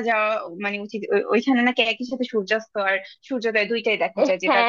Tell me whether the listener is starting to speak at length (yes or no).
yes